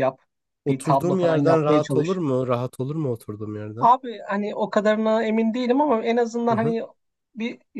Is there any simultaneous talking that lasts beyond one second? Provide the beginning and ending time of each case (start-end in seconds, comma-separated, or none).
0.7-2.2